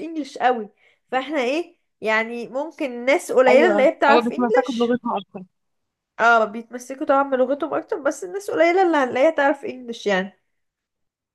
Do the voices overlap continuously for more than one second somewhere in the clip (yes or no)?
yes